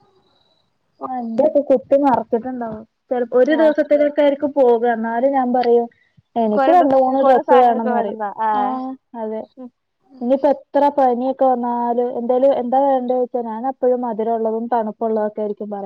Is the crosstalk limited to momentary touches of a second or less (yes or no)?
no